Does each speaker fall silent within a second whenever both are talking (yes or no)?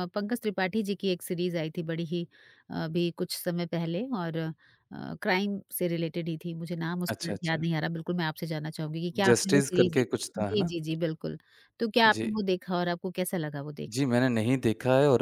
no